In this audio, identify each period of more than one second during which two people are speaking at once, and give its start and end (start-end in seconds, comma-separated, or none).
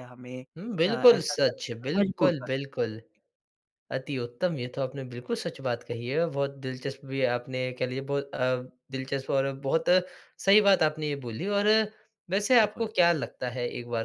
0.8-2.5